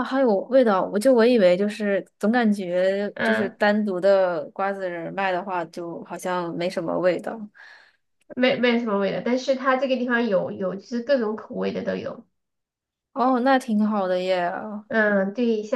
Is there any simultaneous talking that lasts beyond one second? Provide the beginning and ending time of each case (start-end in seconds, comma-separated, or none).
none